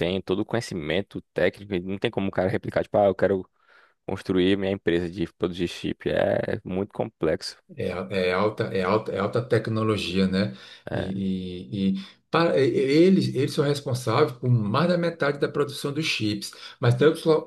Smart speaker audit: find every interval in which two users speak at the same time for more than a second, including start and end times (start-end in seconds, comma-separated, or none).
none